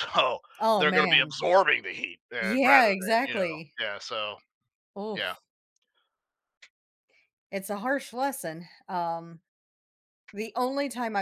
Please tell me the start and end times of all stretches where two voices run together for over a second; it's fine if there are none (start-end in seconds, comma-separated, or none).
2.4-3.7